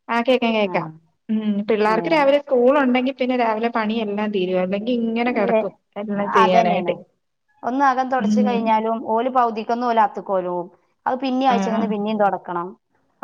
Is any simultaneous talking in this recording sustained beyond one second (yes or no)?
no